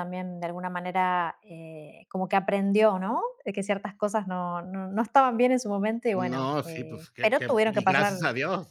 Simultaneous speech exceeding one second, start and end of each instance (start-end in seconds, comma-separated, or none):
6.2-8.2